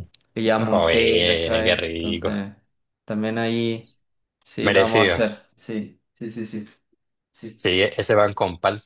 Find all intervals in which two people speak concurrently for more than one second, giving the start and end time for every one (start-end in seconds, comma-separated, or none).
0.6-2.3